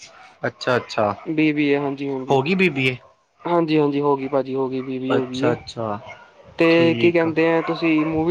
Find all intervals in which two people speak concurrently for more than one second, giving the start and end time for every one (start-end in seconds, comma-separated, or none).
none